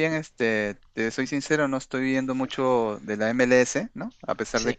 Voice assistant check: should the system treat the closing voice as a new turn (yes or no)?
no